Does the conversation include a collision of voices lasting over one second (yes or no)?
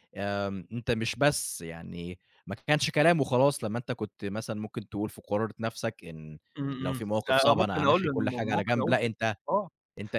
yes